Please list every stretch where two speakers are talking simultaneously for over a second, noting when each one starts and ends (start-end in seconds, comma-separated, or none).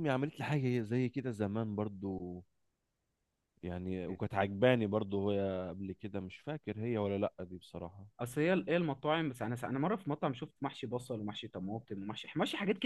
none